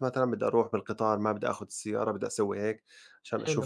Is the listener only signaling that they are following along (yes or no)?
yes